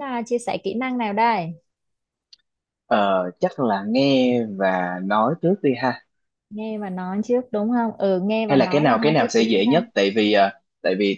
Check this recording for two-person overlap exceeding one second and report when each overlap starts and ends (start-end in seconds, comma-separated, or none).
8.5-9.8